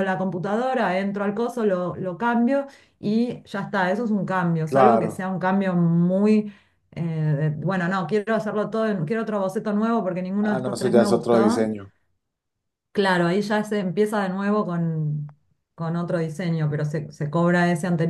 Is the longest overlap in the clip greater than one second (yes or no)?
yes